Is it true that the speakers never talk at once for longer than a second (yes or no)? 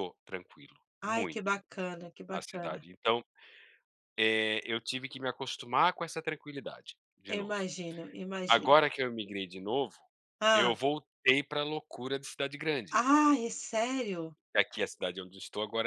yes